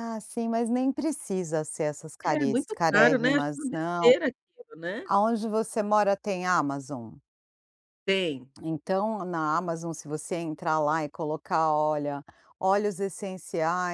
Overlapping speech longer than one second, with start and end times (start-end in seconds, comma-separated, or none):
2.2-4.1